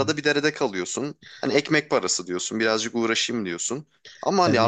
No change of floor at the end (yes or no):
no